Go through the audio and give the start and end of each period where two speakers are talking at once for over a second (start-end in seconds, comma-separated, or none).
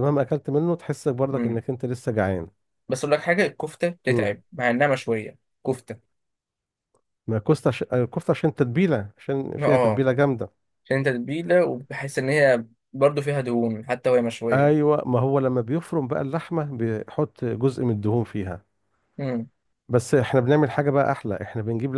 none